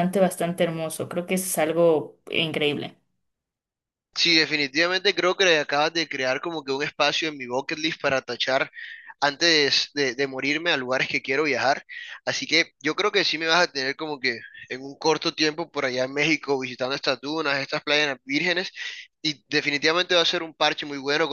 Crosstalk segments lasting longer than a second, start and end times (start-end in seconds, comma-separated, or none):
none